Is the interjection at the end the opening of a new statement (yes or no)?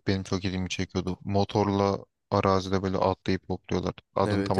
yes